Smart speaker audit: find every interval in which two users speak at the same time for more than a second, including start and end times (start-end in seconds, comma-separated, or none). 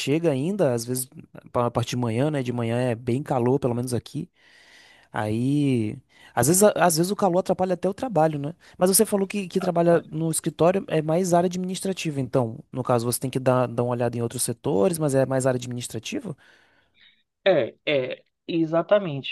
none